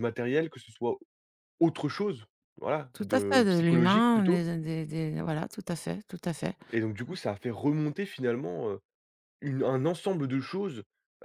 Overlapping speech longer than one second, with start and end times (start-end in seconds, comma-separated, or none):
2.9-4.5